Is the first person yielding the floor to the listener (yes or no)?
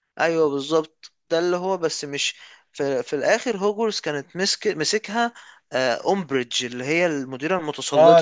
yes